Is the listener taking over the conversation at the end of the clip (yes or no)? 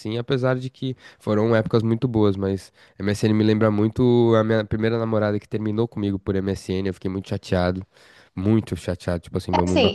yes